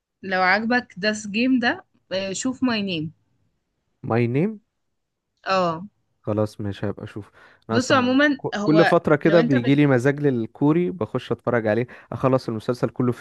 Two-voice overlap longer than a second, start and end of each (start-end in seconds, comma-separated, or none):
7.7-9.8